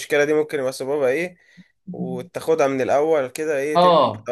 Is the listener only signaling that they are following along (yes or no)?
no